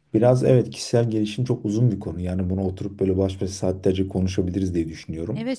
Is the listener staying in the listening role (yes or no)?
no